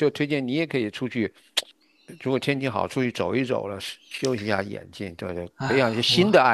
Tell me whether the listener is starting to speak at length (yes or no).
no